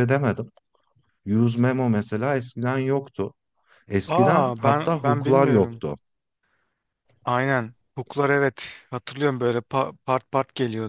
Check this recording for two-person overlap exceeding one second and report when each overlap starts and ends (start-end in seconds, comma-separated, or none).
4.1-5.8